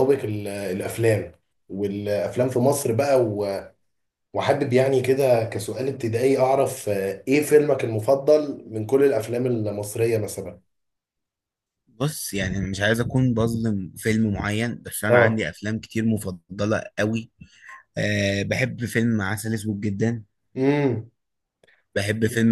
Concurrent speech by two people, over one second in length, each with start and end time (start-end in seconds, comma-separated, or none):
none